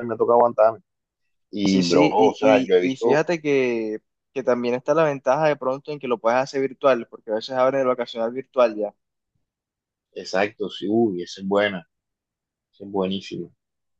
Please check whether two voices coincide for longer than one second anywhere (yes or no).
yes